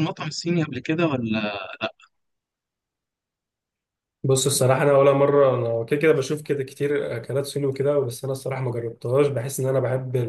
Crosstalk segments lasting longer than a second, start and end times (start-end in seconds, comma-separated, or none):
none